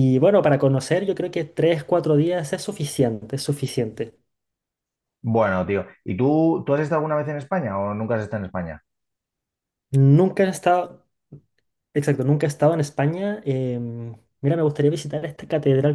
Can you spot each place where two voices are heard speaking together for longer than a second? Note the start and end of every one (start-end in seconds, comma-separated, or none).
none